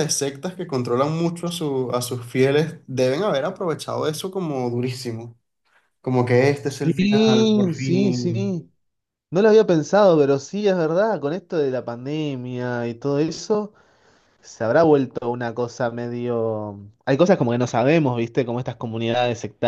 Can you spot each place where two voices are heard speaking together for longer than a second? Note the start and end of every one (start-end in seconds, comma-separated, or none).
6.7-8.6